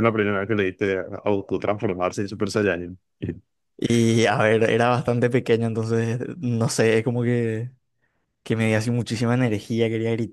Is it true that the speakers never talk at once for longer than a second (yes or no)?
yes